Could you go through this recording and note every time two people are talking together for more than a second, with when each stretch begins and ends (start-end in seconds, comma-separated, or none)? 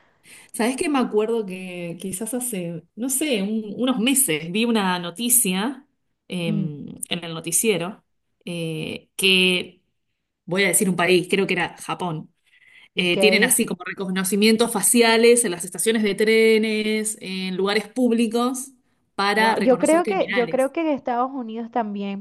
19.3-20.7